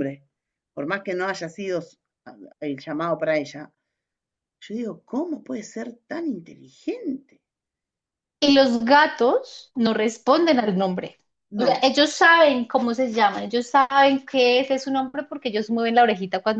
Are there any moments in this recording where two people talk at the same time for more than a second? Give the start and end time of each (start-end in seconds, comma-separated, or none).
none